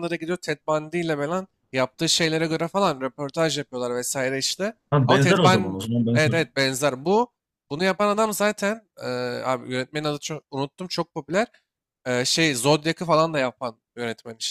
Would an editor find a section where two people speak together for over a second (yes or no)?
yes